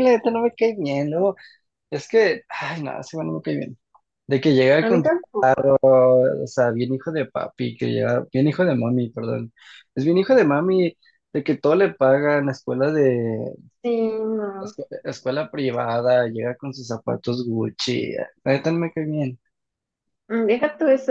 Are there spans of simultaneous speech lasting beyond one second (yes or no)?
no